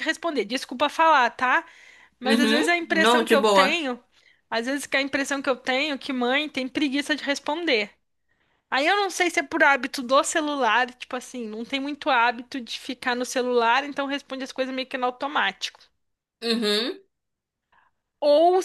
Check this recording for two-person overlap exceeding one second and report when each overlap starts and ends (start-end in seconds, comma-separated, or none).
2.2-3.8